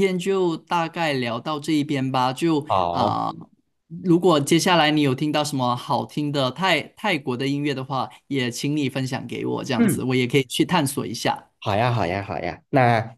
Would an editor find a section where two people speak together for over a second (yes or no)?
no